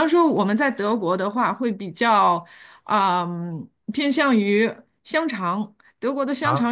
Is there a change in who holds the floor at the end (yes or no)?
no